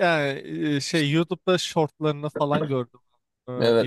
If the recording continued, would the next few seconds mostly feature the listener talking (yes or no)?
yes